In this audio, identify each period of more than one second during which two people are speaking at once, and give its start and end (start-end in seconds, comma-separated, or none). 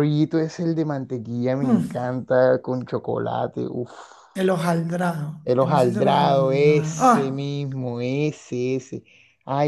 5.4-7.5